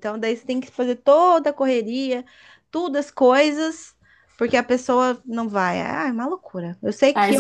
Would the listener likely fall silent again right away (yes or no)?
no